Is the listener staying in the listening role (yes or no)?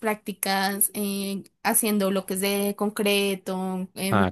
yes